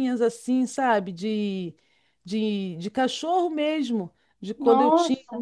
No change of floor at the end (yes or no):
yes